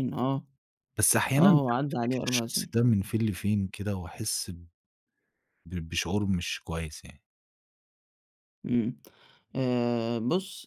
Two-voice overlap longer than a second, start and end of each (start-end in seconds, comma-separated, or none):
1.4-2.8